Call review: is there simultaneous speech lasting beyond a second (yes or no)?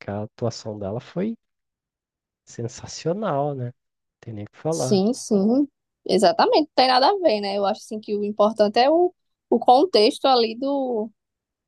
no